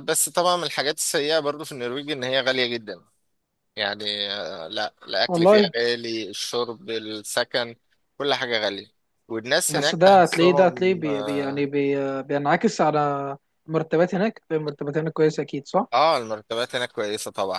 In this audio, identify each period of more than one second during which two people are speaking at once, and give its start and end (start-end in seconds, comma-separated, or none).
9.7-11.7